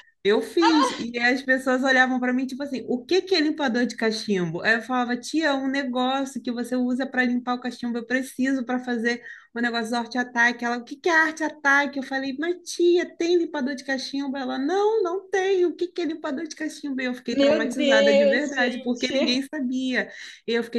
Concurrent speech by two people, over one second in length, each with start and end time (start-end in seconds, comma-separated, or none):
17.3-19.4